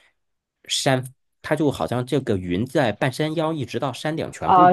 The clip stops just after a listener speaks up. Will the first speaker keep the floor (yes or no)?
no